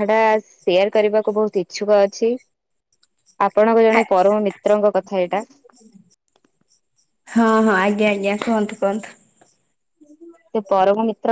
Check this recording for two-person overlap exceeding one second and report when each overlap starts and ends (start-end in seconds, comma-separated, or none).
none